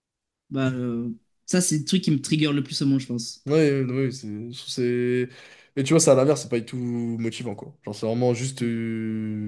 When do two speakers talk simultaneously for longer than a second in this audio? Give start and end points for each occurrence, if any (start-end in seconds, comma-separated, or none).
none